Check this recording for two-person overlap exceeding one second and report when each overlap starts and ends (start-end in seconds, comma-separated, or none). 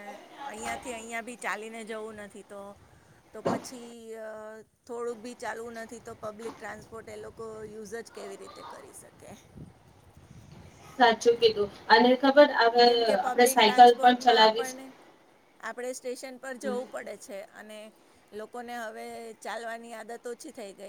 12.8-14.7